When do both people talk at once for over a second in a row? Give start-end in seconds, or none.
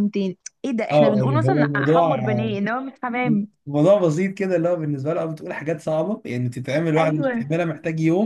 0.9-2.1